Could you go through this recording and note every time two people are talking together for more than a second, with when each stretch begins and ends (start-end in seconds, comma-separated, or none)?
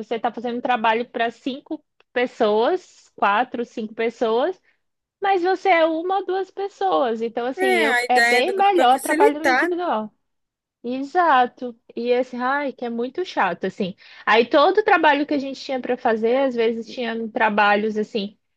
7.7-9.7